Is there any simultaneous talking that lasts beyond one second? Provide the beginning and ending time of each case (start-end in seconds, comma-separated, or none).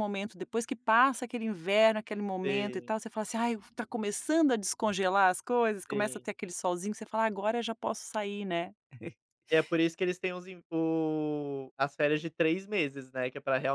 none